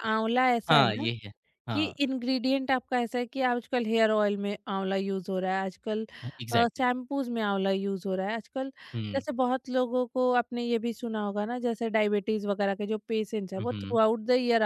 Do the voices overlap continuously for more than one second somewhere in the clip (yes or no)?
no